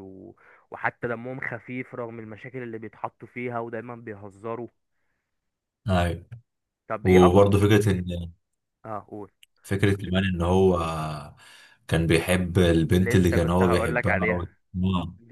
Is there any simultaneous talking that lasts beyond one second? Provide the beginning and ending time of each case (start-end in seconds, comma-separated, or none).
13.0-14.4